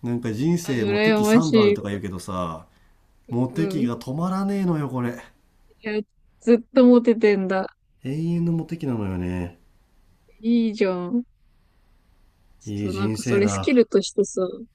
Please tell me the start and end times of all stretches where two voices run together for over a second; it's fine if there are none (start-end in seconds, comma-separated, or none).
0.6-2.0, 12.7-13.8